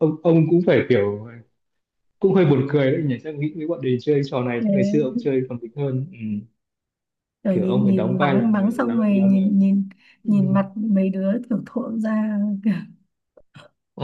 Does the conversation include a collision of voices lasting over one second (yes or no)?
yes